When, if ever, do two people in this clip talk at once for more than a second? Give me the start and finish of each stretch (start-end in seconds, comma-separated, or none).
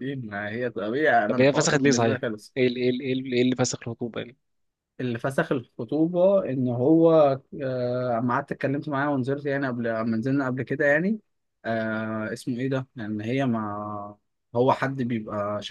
1.2-2.5